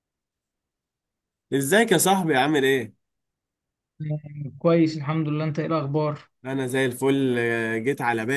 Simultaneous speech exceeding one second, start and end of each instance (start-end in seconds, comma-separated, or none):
none